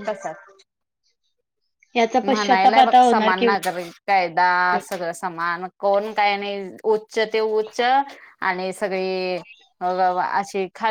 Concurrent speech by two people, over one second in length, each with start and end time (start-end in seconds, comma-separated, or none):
2.3-3.7